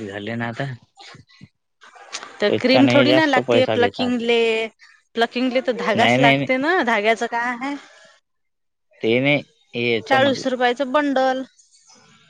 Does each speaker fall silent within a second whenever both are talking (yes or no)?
no